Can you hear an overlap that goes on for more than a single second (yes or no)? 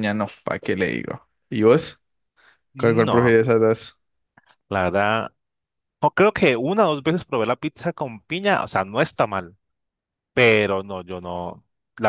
no